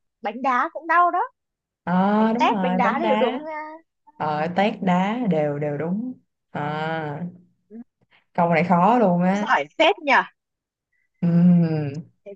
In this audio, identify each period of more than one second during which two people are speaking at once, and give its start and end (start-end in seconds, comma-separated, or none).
2.2-3.4